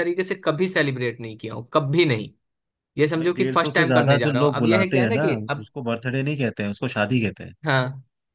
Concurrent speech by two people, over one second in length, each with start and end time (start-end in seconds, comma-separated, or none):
3.2-5.7